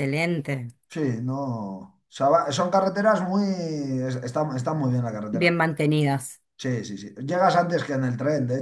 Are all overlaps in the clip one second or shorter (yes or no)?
yes